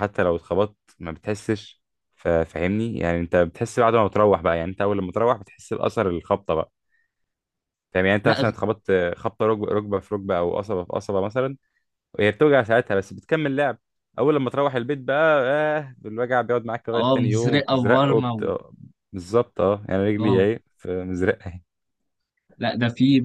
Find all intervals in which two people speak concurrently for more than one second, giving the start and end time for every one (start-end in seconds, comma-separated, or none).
17.0-18.4